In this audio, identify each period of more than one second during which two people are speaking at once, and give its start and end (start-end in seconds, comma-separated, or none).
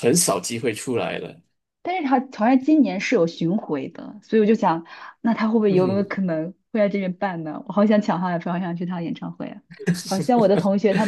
none